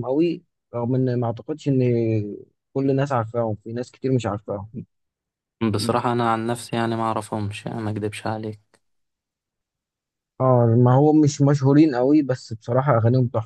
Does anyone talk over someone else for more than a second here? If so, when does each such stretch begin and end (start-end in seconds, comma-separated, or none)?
none